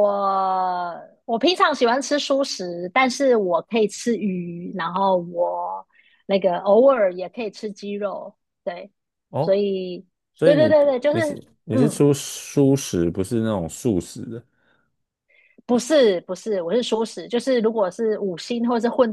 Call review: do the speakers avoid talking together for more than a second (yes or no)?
no